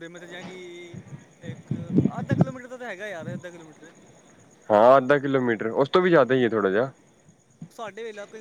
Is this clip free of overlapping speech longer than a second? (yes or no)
yes